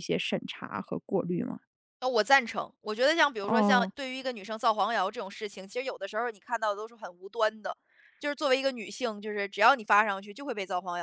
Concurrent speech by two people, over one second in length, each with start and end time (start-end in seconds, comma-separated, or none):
none